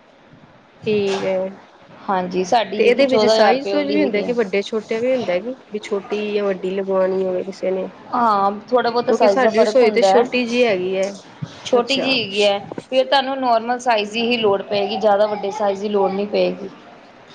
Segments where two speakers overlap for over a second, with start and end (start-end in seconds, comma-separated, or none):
2.8-4.3, 9.0-10.2